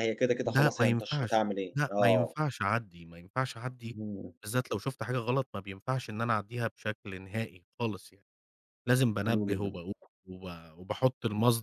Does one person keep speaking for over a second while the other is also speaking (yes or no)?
yes